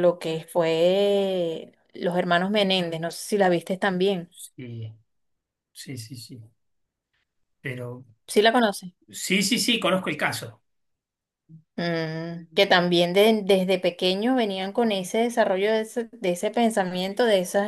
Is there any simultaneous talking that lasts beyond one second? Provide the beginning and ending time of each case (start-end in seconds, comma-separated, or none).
none